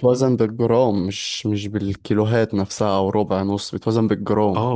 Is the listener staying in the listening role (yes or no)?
no